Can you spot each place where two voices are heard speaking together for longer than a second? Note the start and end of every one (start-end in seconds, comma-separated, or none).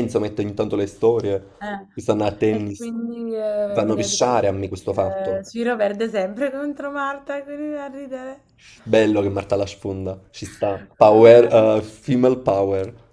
2.5-5.4